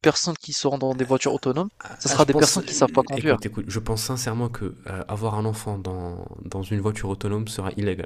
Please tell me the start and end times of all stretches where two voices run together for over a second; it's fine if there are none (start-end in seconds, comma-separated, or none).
2.1-3.4